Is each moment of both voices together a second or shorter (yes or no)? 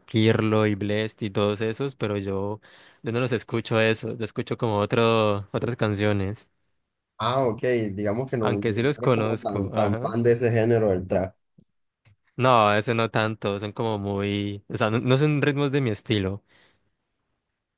no